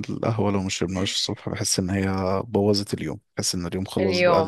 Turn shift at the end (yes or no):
yes